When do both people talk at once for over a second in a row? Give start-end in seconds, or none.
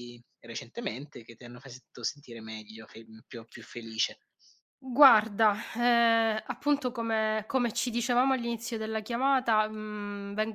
none